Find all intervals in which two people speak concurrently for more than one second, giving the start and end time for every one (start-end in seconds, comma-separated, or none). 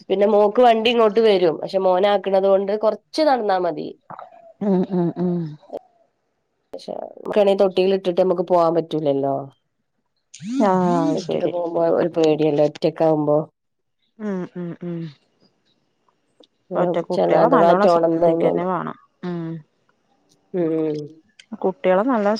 17.1-18.6